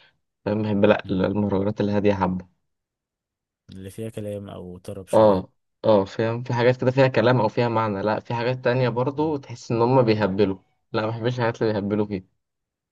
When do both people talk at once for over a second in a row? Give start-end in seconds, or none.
none